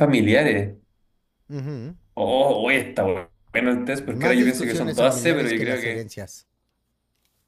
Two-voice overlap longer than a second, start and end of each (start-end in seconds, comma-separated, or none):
4.0-6.1